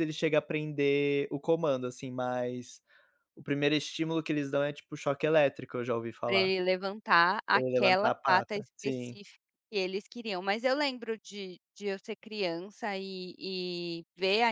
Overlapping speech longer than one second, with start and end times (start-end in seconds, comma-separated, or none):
7.5-9.2